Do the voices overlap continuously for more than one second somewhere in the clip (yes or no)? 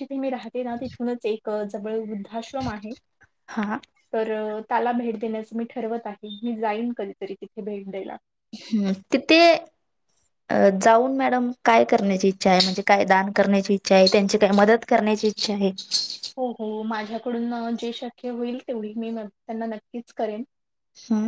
no